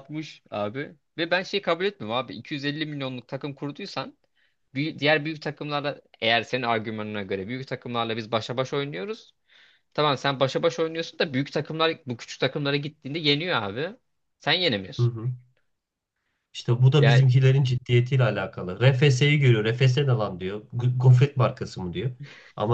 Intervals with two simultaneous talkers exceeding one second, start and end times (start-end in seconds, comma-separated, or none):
none